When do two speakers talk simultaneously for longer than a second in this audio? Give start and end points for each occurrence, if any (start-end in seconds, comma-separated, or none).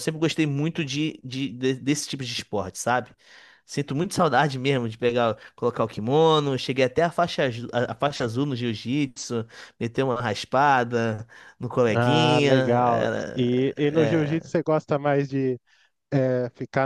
11.9-13.7